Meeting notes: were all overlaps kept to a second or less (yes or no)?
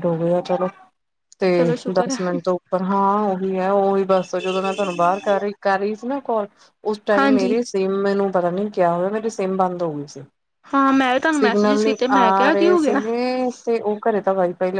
no